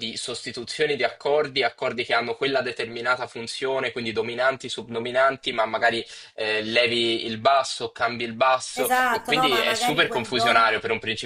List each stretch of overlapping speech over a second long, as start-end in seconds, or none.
8.8-10.8